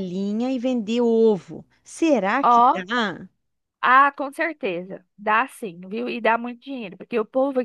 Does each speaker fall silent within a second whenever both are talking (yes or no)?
yes